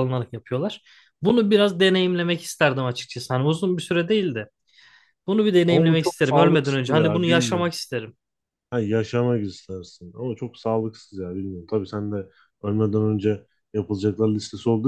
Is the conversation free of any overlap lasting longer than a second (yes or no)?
no